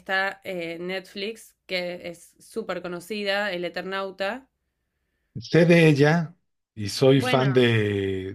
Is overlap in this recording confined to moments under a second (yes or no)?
yes